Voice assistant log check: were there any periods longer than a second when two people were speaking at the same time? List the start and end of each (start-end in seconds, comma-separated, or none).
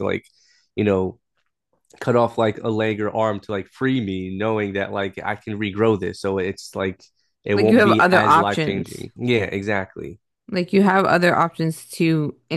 7.6-9.1